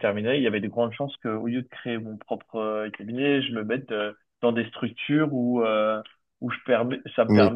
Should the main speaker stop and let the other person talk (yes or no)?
no